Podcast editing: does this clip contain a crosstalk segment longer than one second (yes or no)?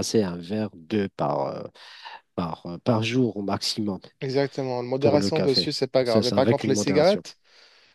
yes